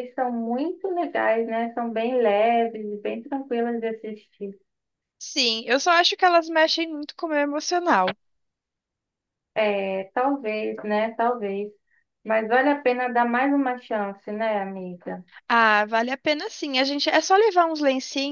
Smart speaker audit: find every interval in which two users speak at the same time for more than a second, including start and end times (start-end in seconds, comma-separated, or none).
none